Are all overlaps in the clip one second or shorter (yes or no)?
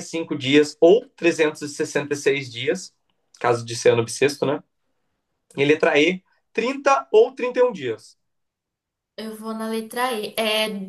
yes